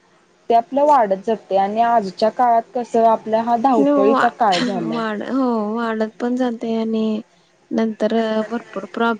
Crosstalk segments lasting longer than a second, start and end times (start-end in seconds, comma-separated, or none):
none